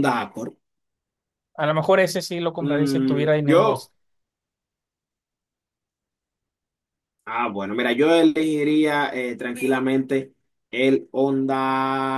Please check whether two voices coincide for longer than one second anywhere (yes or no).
yes